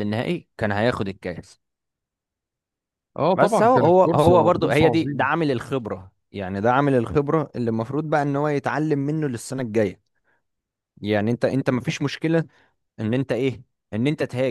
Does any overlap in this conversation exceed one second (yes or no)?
yes